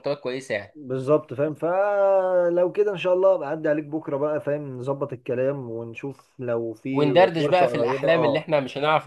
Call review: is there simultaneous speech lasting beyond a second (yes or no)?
yes